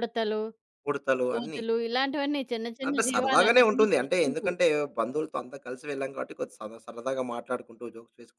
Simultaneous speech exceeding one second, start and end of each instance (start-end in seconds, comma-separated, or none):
2.9-4.5